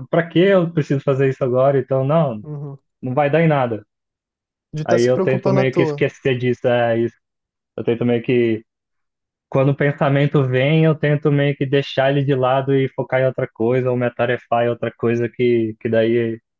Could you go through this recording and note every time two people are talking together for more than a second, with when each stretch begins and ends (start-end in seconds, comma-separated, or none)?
4.8-6.1